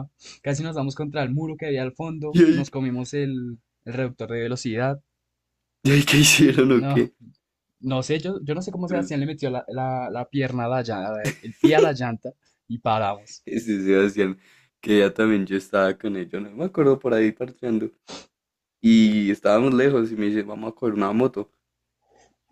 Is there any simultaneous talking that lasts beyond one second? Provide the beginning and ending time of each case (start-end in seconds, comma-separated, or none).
none